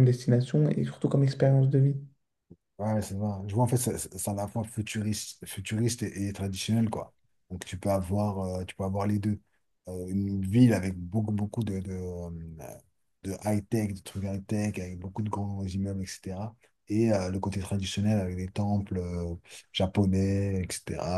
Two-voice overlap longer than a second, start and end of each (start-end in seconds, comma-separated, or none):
none